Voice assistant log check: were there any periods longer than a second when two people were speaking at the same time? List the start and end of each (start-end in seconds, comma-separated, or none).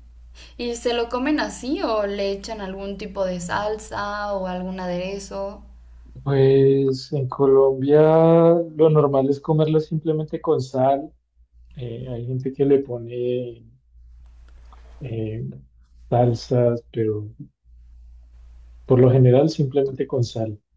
none